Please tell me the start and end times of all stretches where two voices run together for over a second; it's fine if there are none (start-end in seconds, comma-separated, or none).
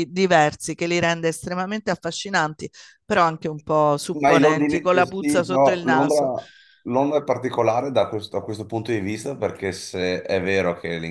4.1-6.3